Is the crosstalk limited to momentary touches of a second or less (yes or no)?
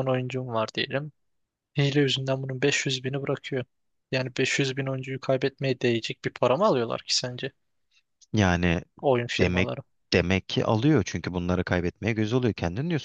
yes